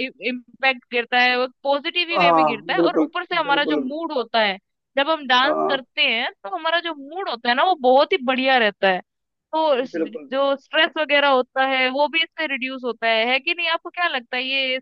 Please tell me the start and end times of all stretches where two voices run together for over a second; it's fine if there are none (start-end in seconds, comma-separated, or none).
2.2-3.9